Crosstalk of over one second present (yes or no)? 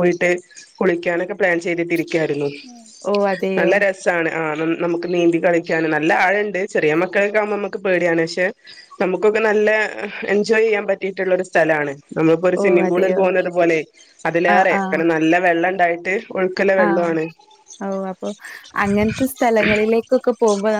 no